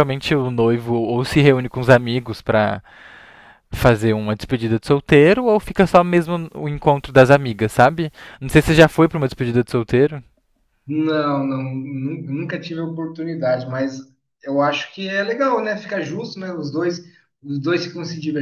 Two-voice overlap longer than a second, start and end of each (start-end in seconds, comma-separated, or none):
none